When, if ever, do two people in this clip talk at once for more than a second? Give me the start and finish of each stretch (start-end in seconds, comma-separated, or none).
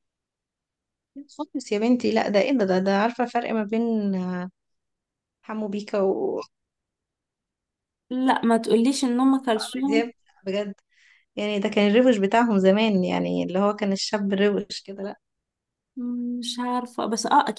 none